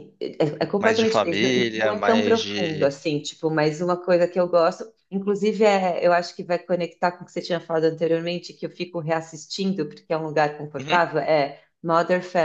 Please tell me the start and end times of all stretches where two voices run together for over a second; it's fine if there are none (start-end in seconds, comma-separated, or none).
0.8-2.9